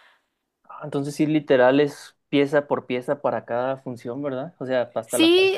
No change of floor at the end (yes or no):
no